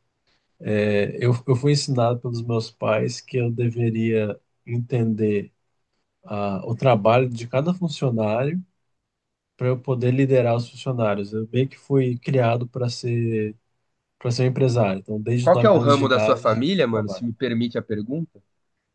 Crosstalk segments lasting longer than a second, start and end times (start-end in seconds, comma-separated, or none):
15.4-17.2